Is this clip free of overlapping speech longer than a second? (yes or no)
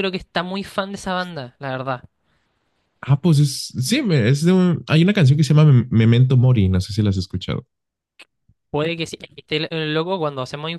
yes